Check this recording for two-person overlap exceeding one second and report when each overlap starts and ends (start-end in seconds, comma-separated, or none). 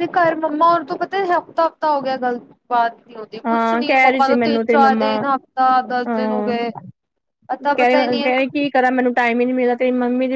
3.5-5.1